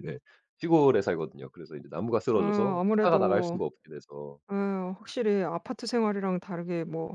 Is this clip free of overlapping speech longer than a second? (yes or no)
no